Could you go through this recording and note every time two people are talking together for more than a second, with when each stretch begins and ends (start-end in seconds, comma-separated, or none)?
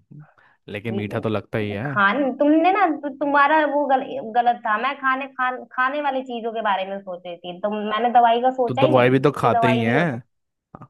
8.7-10.1